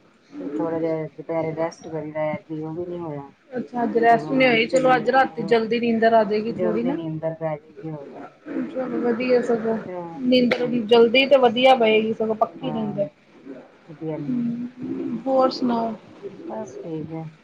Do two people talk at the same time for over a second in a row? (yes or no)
yes